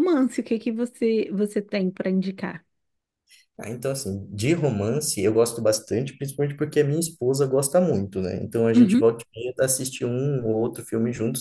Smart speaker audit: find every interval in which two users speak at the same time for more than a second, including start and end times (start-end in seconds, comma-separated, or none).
none